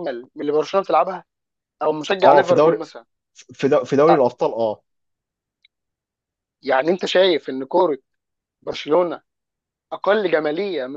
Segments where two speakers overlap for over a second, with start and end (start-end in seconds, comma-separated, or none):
none